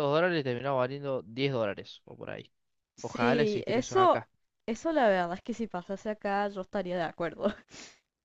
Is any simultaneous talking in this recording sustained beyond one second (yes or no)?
yes